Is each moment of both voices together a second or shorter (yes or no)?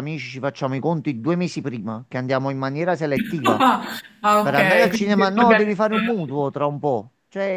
no